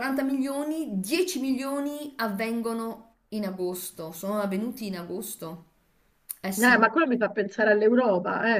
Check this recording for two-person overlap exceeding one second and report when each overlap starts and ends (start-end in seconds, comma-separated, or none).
none